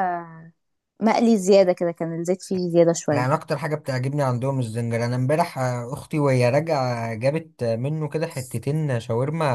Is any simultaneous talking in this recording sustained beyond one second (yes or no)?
no